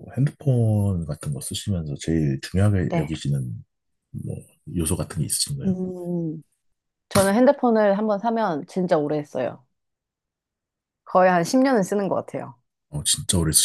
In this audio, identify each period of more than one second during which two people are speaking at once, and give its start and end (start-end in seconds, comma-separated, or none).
none